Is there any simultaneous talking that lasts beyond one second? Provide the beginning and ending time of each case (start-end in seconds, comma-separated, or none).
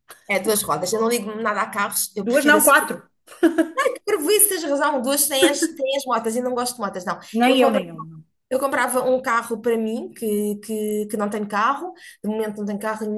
none